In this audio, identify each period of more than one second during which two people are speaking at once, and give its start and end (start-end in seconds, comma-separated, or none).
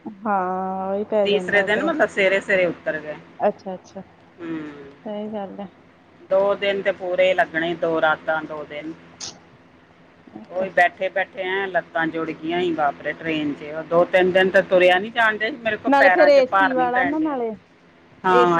15.9-17.4